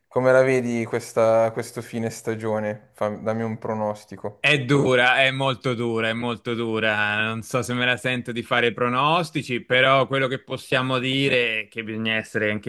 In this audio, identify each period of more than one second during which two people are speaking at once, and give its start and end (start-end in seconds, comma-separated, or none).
none